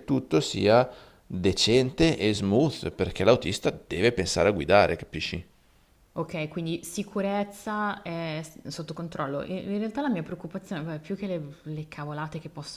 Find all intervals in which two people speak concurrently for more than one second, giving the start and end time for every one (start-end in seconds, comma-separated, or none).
none